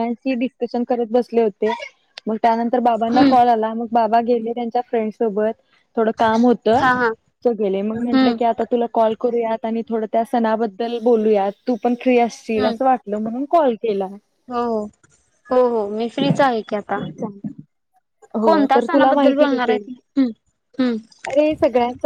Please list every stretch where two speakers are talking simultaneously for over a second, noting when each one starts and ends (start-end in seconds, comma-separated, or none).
18.4-19.9